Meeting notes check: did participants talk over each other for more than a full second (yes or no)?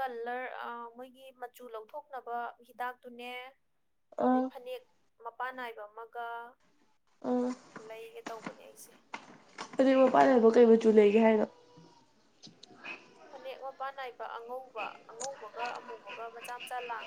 no